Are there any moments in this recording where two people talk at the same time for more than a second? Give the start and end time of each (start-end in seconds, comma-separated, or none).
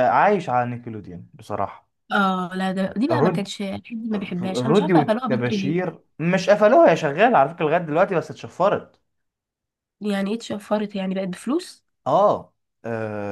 4.4-5.8